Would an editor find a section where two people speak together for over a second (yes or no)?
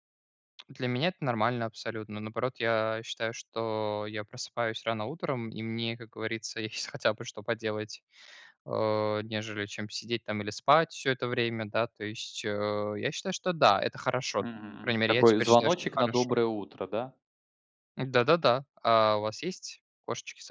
yes